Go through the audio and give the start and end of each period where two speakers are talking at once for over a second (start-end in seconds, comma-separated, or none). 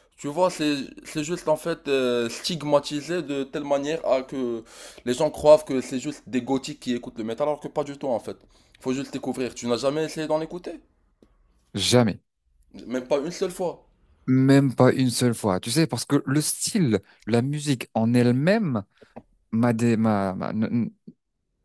none